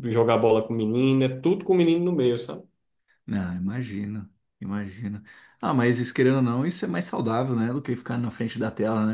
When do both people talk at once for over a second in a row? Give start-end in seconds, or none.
none